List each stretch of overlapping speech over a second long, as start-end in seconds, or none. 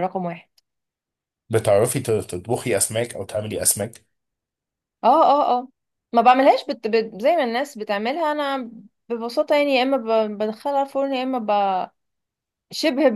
none